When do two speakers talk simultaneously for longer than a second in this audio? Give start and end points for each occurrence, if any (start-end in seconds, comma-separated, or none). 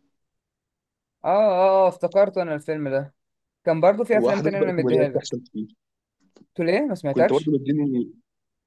4.2-5.4